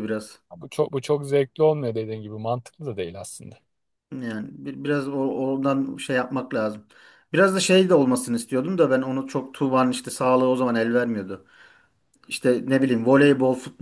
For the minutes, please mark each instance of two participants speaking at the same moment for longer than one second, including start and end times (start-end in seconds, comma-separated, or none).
none